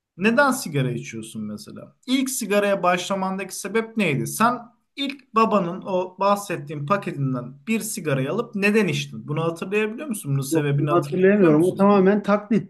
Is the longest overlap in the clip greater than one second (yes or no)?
yes